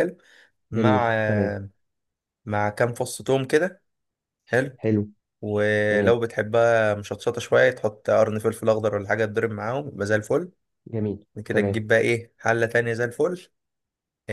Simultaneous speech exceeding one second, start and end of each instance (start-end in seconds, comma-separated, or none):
none